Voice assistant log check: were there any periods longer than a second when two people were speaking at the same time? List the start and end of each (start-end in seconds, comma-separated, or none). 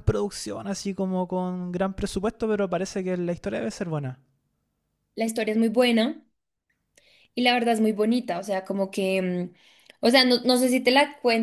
none